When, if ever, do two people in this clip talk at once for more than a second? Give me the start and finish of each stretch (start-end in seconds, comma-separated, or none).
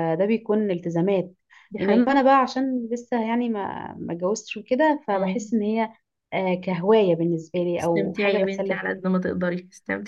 7.8-9.0